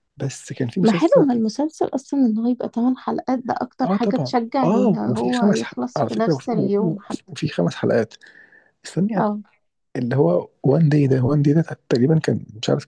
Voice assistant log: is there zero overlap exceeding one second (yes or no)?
no